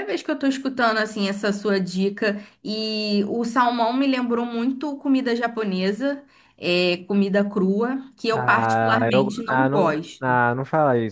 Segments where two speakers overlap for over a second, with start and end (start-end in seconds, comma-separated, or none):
8.3-10.4